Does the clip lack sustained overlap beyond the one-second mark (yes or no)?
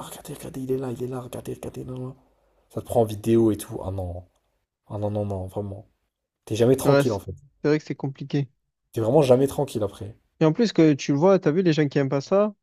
yes